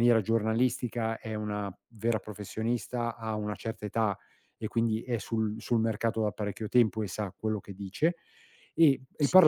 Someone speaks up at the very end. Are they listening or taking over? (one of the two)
listening